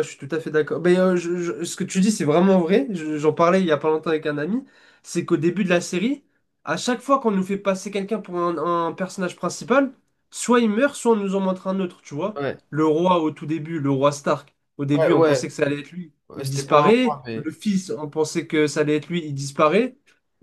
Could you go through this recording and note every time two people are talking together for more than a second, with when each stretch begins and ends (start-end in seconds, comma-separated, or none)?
16.3-17.5